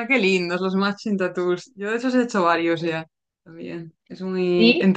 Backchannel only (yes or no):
yes